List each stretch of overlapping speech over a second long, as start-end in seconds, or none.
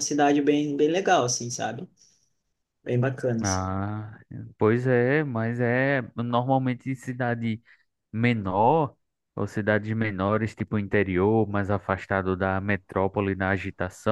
none